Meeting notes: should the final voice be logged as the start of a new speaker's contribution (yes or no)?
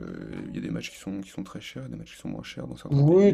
yes